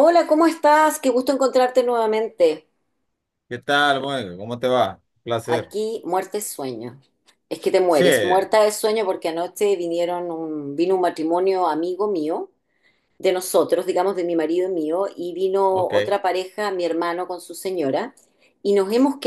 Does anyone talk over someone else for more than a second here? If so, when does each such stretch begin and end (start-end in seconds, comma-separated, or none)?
none